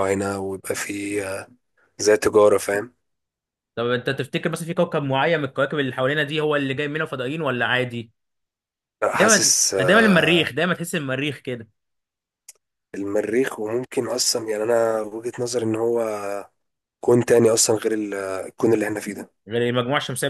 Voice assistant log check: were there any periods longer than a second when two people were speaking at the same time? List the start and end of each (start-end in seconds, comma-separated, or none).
9.1-10.5